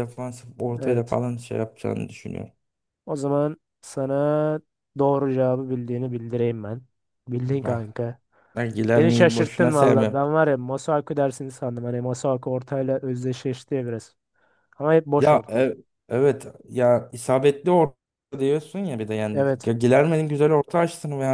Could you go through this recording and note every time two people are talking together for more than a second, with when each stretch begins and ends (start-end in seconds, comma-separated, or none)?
8.9-10.2